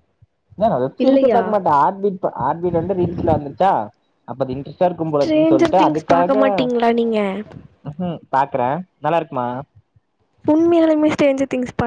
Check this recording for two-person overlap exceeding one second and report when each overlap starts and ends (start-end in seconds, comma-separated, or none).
5.1-6.5